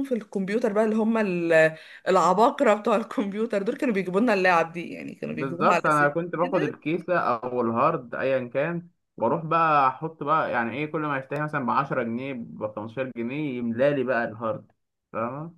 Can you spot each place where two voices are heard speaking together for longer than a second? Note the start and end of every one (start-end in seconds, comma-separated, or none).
5.3-6.8